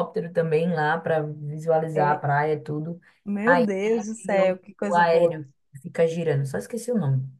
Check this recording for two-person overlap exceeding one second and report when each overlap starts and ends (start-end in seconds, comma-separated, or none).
3.5-5.4